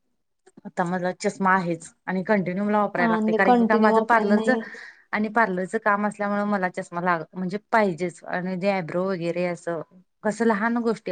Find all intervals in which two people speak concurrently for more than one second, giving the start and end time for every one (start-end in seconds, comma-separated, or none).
3.0-4.5